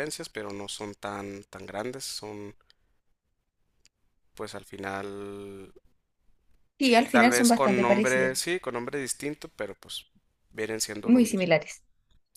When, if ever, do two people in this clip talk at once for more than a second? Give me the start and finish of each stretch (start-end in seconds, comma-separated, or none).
7.1-8.3